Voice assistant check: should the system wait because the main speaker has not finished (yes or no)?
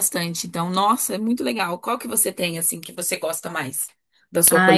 no